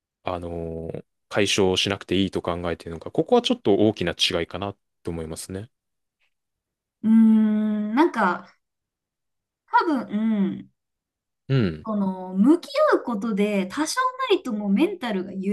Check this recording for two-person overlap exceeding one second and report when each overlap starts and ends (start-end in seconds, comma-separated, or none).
none